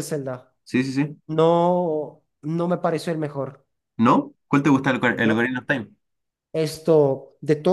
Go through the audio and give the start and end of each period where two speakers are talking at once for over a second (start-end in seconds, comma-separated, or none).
none